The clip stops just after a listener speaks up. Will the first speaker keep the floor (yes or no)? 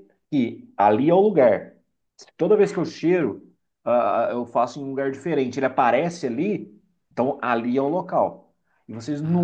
yes